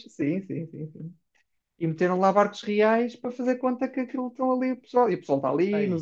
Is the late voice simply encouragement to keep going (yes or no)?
yes